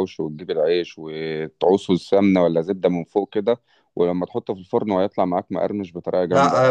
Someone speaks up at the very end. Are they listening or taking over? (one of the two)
taking over